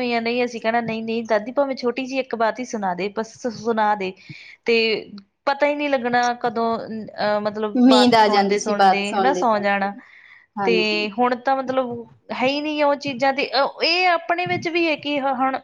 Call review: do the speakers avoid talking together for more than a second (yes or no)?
no